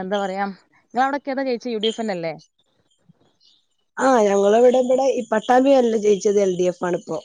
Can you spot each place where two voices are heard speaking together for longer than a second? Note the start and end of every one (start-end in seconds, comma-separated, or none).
none